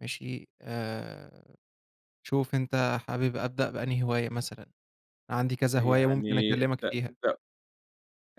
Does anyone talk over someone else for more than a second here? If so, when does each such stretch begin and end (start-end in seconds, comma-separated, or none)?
5.8-7.1